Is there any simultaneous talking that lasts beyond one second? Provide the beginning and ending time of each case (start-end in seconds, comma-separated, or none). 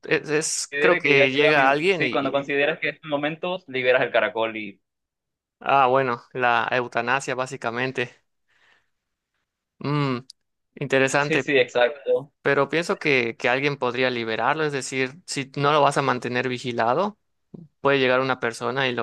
0.7-2.4